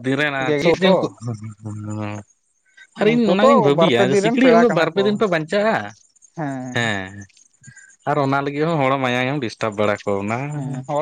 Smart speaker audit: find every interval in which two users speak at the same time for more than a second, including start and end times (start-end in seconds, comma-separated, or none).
3.1-5.0